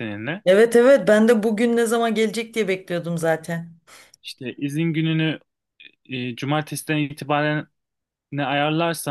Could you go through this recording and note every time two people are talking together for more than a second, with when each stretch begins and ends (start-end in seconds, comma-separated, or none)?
none